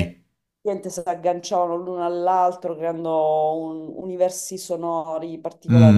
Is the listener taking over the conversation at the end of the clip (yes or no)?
yes